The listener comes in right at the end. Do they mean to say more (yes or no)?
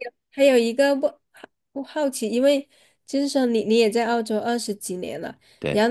no